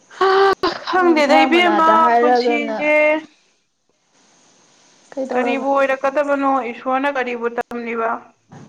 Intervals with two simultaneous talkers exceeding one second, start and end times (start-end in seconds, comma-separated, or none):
1.0-2.9